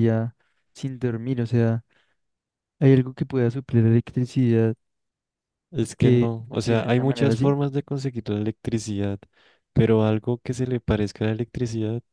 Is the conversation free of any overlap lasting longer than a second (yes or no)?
no